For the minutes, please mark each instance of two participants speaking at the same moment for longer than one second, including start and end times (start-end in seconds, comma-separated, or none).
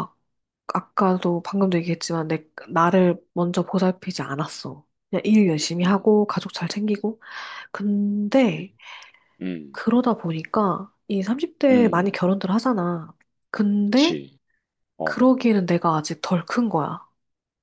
none